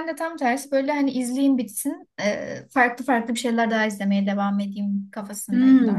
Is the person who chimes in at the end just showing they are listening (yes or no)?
no